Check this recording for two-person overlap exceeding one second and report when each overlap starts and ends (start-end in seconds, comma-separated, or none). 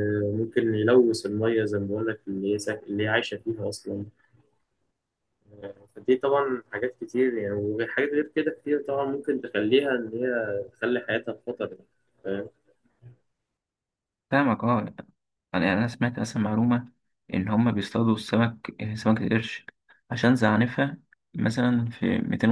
none